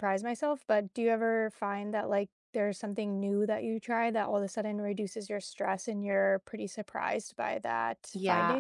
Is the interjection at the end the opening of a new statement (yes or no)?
yes